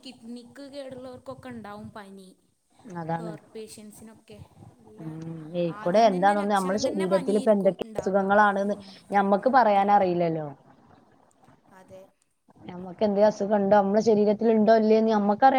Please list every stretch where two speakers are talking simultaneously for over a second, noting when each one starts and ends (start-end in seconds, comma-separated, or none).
5.8-8.2